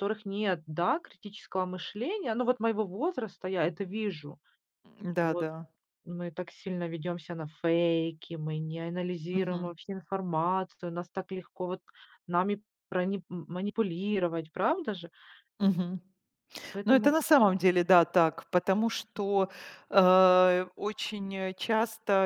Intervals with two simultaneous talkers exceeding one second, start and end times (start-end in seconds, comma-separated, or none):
none